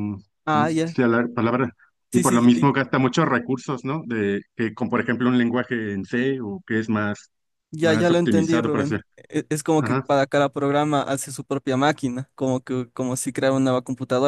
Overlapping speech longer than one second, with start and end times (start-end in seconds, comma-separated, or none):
7.8-9.0